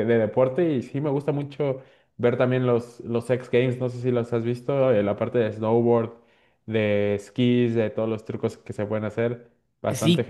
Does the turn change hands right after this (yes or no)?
yes